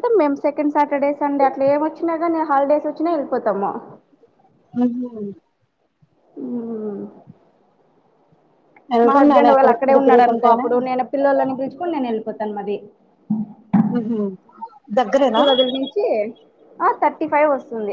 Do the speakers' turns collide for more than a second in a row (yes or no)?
yes